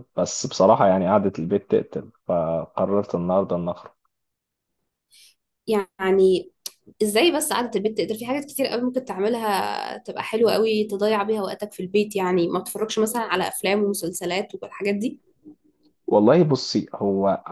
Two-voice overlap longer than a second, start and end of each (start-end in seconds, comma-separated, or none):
none